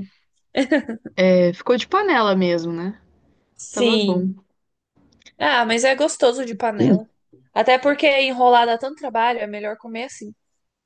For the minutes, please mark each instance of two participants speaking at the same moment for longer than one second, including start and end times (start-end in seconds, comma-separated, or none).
none